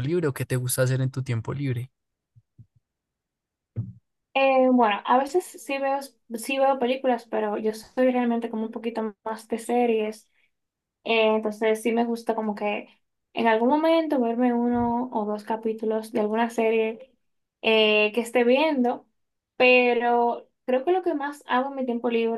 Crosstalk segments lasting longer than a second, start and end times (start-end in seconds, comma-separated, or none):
none